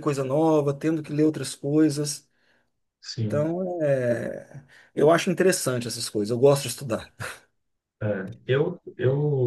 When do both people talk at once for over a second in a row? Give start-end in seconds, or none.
none